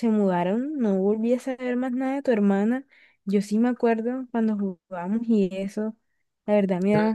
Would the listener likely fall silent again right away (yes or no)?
yes